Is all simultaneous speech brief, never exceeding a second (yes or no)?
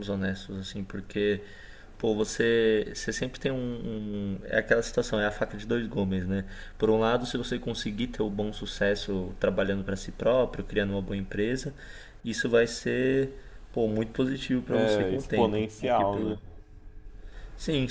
no